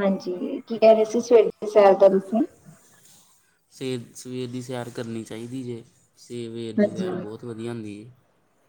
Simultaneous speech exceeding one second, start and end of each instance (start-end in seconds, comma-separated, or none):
none